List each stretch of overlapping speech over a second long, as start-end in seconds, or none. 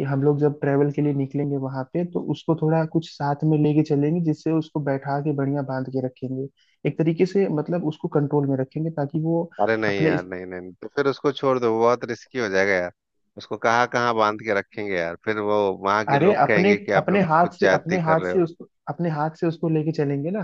16.1-18.4